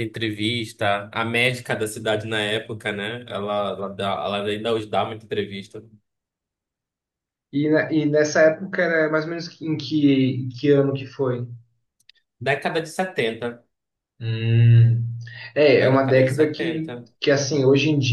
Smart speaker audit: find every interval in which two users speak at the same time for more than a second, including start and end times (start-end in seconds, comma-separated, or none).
15.8-17.1